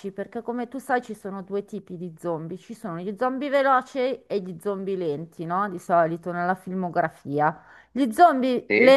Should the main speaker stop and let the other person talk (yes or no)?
no